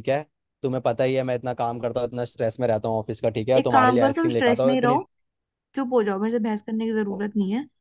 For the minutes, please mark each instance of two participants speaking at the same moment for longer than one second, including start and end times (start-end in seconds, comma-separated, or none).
3.6-5.0